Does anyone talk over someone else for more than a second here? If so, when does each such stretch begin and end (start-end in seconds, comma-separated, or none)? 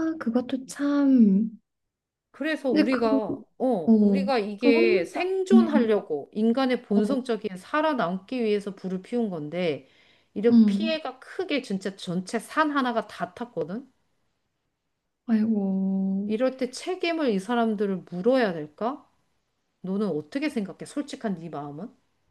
3.9-5.9